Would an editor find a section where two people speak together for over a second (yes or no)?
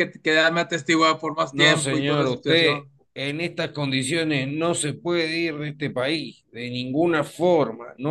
yes